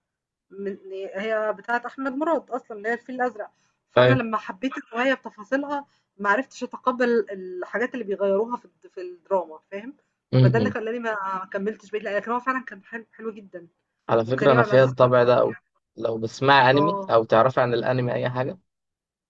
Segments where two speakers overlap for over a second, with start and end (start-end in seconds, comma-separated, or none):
14.2-15.6